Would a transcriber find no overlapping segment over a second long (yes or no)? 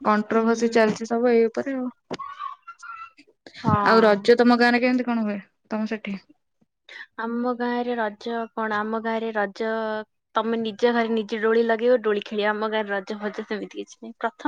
yes